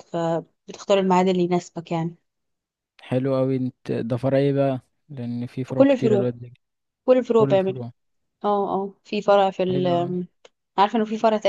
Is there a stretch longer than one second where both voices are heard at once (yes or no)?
no